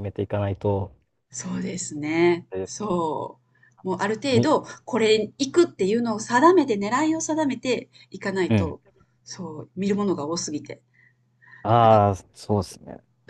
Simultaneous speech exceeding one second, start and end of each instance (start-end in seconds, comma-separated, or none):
none